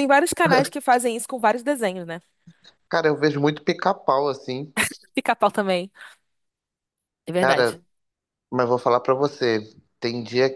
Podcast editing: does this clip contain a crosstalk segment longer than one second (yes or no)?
no